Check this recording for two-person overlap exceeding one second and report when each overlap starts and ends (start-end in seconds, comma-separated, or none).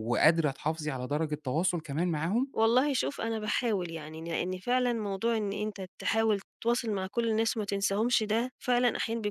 none